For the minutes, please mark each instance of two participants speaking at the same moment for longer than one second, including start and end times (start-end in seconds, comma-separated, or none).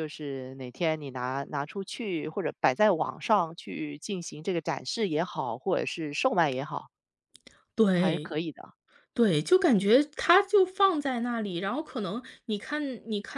none